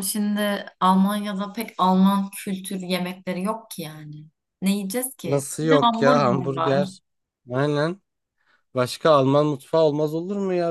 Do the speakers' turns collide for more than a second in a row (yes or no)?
yes